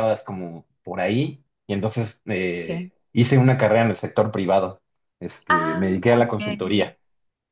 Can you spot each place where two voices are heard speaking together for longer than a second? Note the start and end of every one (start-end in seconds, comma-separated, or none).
5.5-6.9